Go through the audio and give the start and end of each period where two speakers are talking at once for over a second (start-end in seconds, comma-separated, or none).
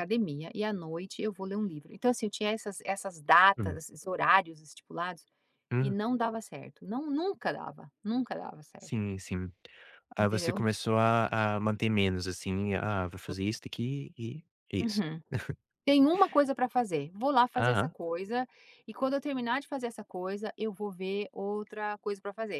none